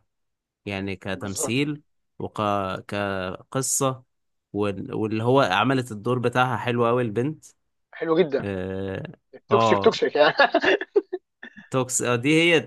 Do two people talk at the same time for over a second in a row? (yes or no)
no